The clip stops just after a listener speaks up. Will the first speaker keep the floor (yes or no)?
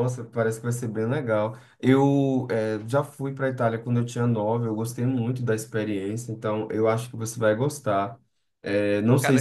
yes